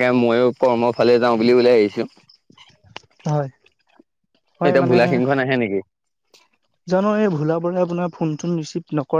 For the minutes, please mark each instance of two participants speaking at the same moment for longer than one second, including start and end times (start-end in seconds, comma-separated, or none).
none